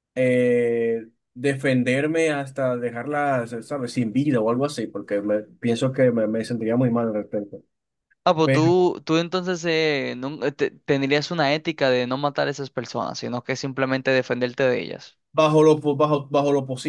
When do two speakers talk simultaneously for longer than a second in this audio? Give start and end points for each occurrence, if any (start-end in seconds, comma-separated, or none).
none